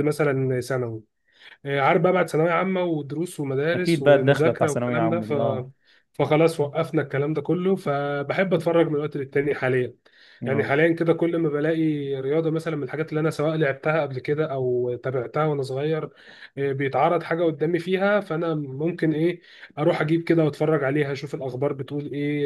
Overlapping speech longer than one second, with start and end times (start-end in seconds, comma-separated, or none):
3.7-5.3